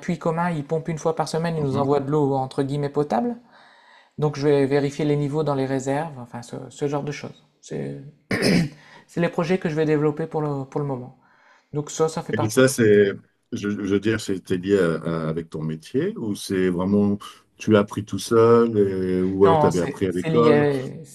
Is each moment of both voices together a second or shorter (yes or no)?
no